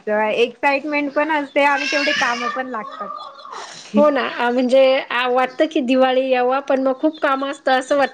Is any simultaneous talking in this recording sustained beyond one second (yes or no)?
no